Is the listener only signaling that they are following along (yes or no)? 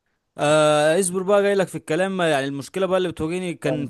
yes